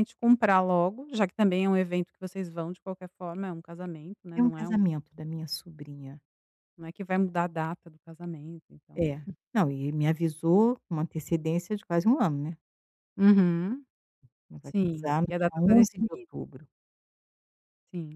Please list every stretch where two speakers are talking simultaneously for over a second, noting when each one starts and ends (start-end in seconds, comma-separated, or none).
14.6-16.3